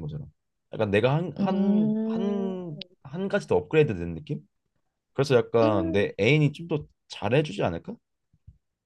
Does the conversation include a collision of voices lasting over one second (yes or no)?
yes